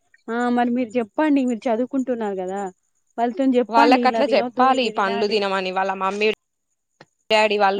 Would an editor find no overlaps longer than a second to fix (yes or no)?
no